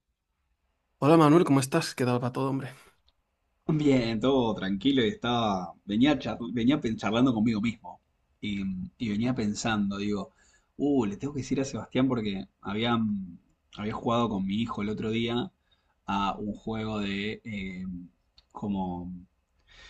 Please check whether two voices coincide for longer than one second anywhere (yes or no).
no